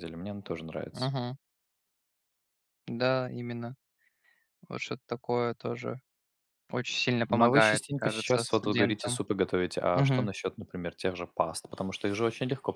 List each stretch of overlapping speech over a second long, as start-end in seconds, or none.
7.3-9.2